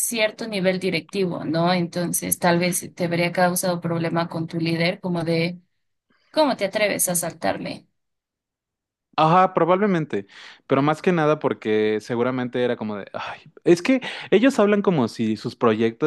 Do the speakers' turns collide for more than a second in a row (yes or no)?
no